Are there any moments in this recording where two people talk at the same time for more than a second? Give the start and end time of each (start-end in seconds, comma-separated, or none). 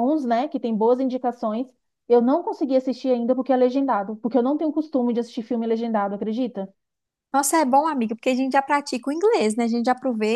none